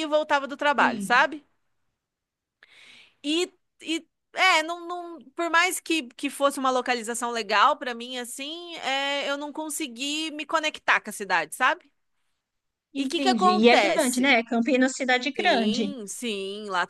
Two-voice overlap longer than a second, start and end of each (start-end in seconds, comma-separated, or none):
13.0-14.2